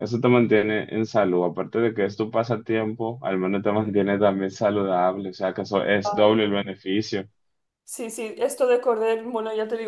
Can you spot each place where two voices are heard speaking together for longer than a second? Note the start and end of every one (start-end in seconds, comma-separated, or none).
none